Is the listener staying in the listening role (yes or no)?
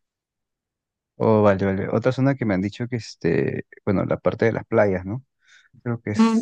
no